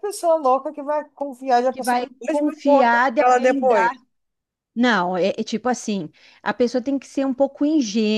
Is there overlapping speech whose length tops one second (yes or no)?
yes